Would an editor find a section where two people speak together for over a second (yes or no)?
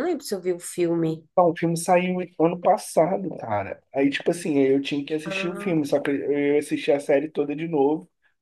no